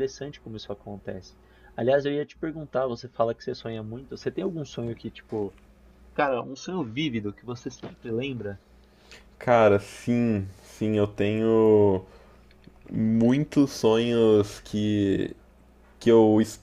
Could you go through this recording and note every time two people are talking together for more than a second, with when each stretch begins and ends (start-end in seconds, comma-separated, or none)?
none